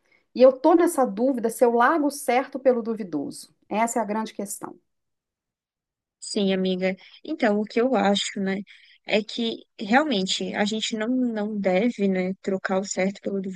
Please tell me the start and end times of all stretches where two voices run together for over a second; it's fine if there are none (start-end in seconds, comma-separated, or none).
none